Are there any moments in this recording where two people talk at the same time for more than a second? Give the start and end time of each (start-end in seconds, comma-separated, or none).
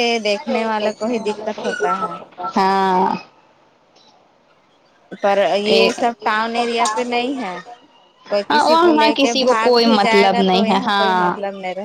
8.5-11.1